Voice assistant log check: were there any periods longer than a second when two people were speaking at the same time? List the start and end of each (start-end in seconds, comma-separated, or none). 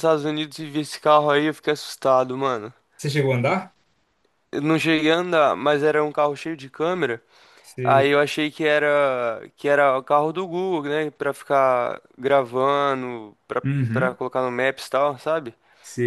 none